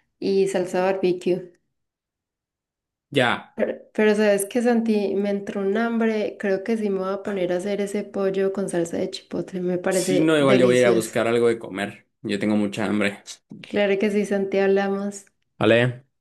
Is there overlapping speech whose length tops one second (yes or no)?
yes